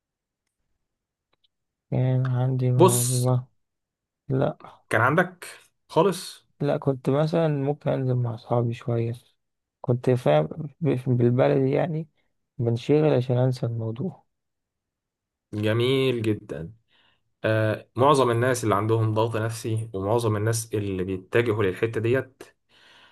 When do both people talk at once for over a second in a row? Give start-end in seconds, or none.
none